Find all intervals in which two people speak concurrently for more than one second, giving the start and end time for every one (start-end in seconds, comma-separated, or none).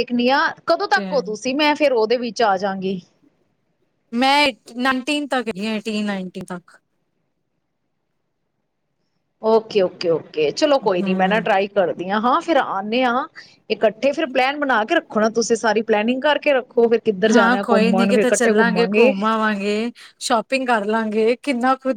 17.3-19.1